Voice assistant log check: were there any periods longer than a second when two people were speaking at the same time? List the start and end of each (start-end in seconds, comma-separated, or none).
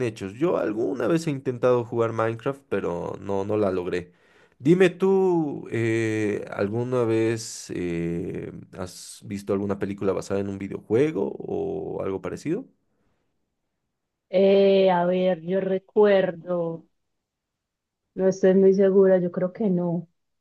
none